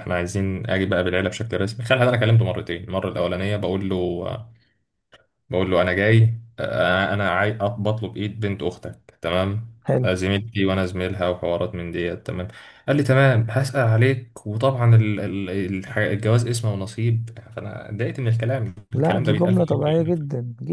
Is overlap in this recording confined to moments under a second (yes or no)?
no